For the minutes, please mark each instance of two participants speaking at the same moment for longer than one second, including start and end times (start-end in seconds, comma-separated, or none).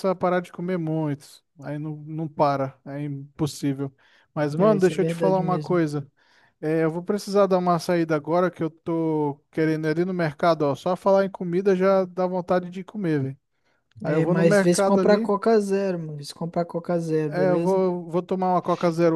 4.6-5.8, 14.0-15.3